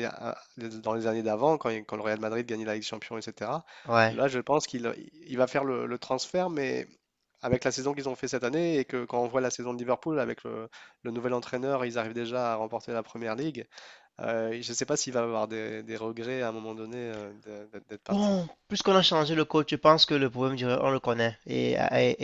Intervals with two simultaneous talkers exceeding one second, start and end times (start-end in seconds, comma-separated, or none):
none